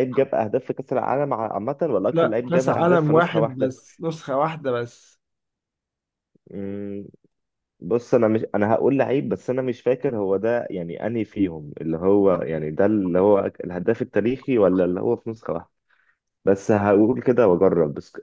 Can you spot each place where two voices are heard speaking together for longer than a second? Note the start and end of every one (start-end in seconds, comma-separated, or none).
2.1-3.7